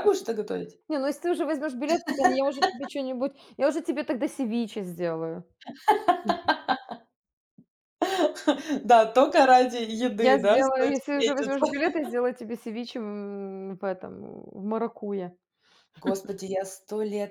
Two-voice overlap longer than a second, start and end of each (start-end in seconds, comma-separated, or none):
10.2-11.7